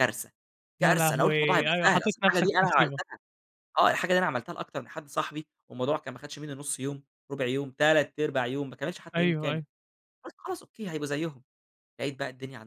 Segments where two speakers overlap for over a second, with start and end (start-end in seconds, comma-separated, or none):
0.8-3.0